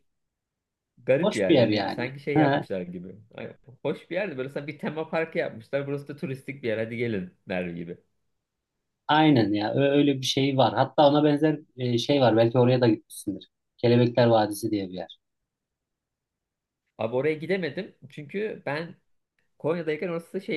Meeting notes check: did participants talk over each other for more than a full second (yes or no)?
yes